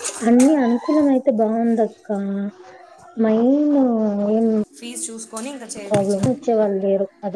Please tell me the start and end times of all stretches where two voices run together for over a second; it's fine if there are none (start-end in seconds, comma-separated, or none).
none